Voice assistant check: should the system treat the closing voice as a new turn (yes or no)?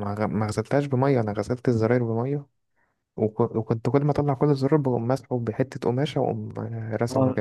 yes